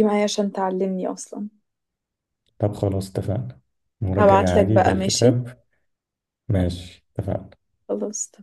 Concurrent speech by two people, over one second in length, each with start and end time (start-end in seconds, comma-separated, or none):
4.2-5.4